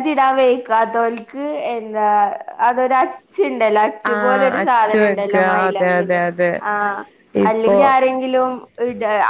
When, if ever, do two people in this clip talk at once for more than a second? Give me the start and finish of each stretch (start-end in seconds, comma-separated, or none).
4.1-6.2